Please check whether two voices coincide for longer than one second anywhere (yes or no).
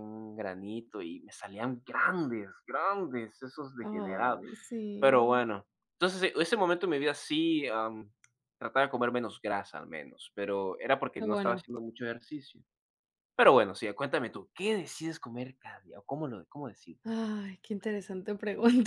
no